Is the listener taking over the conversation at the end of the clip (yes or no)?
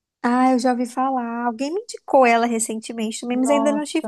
yes